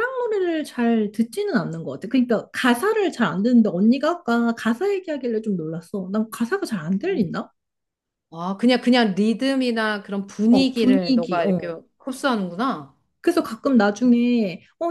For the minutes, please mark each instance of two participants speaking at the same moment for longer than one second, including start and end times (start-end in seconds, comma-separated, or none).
10.5-11.7